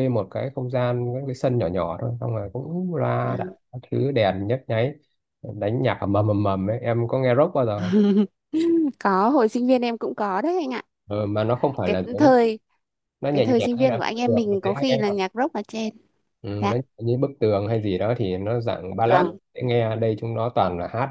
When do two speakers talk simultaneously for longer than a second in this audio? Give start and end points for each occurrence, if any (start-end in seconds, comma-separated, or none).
13.3-15.0